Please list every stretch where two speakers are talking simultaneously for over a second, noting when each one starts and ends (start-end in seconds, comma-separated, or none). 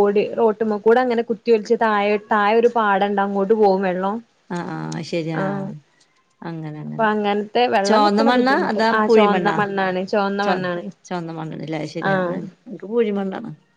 7.9-9.6